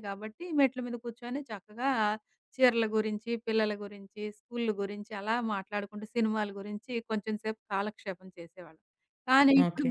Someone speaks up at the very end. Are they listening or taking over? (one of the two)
listening